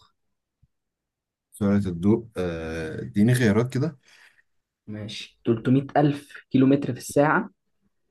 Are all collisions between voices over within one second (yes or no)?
yes